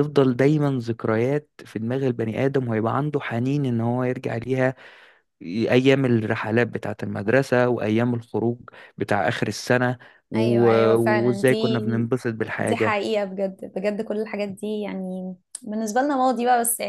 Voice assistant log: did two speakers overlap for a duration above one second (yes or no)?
yes